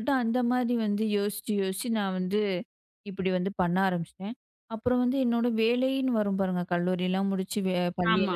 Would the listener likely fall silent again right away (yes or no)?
yes